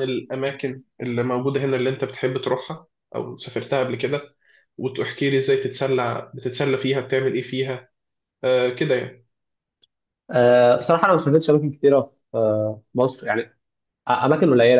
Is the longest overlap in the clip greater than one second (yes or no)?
no